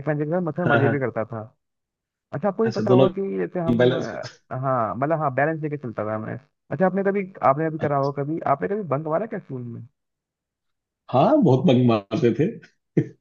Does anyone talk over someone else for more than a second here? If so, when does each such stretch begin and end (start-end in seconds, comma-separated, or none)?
none